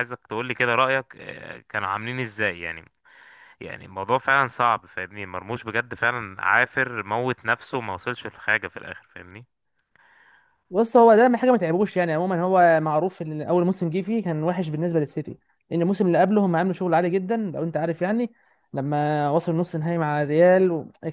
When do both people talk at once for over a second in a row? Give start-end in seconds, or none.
none